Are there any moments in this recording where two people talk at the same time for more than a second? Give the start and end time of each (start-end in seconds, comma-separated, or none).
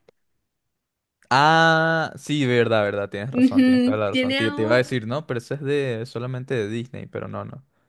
3.3-4.9